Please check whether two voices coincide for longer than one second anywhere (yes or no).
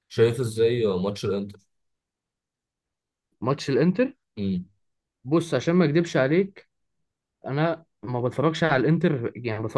no